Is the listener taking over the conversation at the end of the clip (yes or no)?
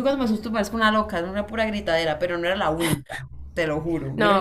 yes